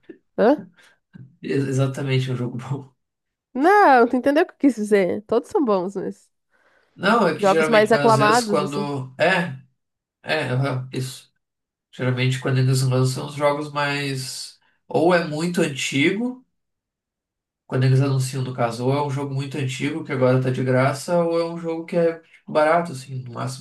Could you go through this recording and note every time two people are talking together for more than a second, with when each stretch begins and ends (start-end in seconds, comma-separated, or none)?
7.4-8.9